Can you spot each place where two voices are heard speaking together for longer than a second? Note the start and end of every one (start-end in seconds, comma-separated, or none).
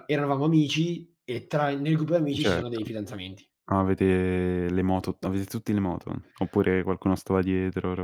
none